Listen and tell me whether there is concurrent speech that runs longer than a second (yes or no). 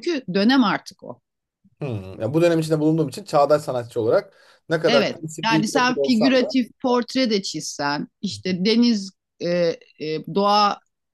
yes